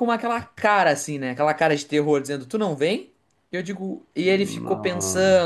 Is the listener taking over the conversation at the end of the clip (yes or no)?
no